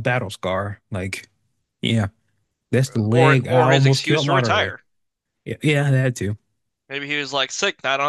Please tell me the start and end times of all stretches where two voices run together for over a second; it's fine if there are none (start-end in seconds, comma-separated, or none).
3.0-4.7